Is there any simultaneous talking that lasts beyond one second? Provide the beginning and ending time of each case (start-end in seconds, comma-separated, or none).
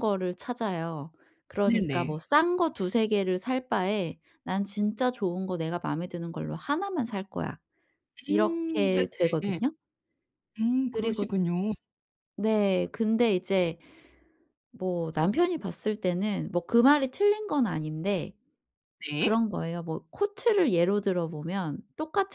8.3-9.6